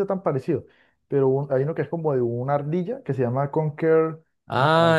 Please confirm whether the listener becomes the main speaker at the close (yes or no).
yes